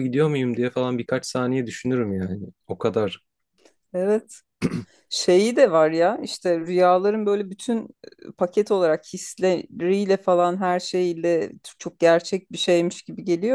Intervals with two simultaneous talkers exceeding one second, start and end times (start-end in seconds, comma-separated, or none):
none